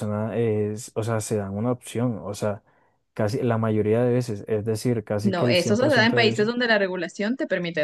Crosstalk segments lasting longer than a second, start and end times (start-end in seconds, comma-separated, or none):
5.2-6.5